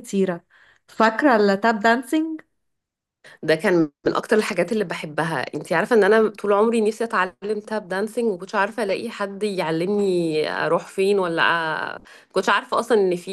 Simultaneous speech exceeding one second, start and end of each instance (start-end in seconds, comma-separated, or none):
none